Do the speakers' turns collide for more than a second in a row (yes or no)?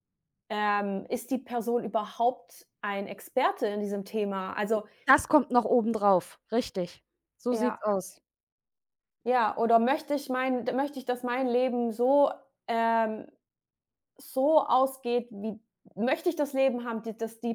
no